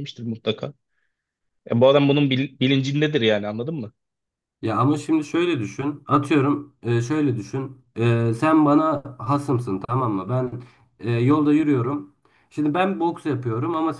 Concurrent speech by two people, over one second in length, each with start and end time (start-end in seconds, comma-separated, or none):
none